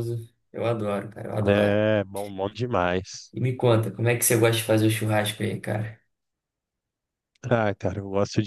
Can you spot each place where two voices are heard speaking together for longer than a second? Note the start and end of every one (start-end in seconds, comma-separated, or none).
none